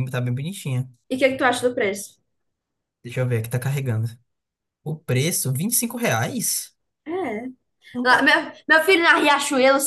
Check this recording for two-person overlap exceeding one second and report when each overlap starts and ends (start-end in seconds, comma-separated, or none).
none